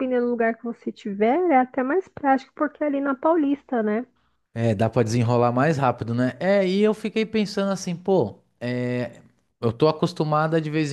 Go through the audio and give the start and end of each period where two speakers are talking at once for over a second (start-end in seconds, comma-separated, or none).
none